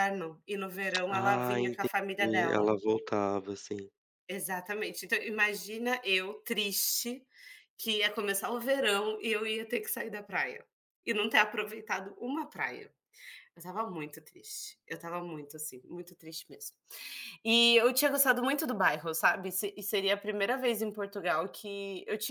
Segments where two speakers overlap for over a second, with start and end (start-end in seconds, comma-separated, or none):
1.1-2.7